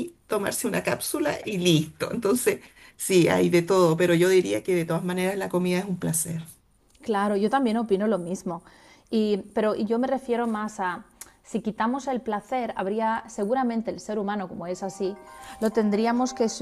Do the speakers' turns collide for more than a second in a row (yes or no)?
no